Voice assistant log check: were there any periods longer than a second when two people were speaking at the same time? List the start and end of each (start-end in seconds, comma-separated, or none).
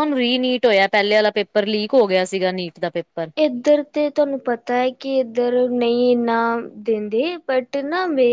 none